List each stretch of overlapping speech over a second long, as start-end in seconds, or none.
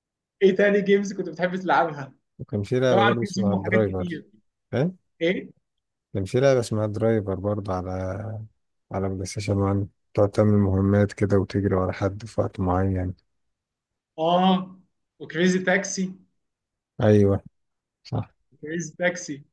2.9-4.2